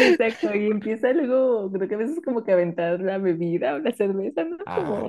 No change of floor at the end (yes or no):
yes